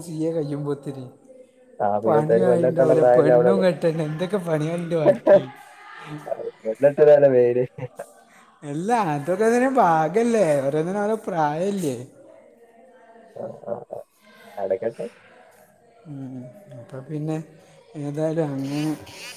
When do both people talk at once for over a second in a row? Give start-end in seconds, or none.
2.0-3.6